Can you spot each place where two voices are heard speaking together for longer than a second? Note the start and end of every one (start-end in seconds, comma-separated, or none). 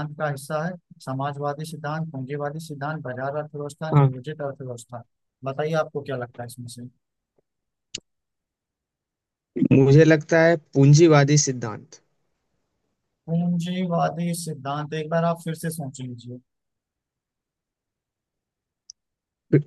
none